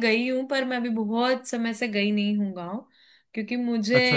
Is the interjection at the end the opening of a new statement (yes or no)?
no